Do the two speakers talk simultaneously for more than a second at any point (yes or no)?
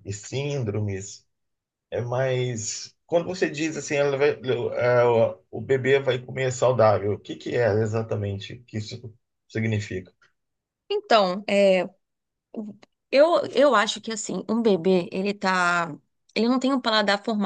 no